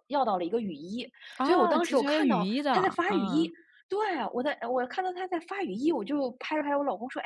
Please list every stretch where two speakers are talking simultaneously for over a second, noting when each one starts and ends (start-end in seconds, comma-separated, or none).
1.4-3.5